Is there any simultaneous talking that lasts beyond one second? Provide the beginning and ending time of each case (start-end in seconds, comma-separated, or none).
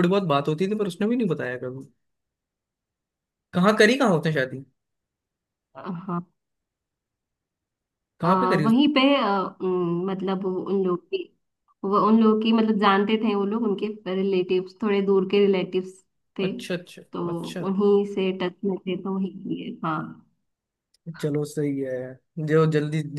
none